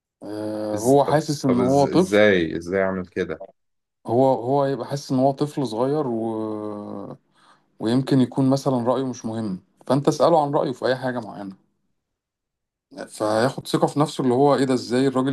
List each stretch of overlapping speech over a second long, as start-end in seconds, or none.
0.8-2.2